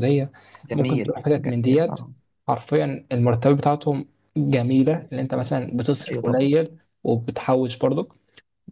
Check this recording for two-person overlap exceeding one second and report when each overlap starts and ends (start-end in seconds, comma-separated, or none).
0.7-2.0